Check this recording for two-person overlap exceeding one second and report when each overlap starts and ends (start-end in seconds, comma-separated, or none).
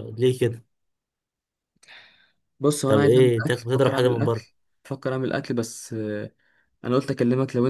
2.9-4.5